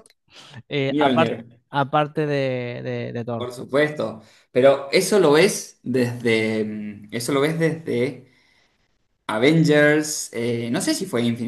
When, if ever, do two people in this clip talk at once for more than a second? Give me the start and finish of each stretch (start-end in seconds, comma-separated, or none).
none